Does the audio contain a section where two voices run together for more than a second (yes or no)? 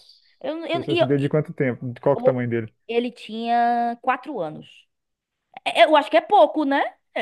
no